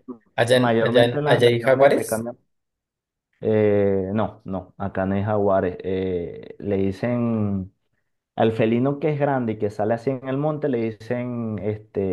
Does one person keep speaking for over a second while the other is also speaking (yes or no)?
yes